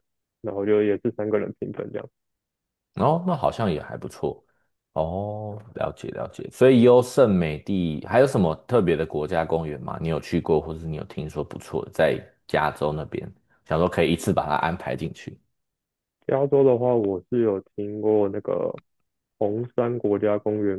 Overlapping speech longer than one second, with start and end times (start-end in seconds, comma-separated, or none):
none